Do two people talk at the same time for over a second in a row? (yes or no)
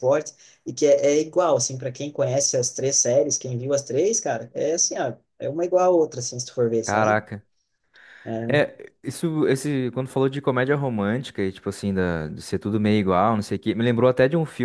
no